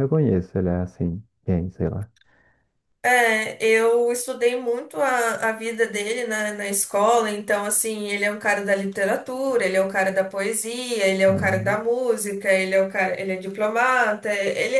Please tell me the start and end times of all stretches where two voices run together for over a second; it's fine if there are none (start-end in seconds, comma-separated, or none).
none